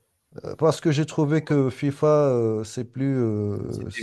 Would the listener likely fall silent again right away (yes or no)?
yes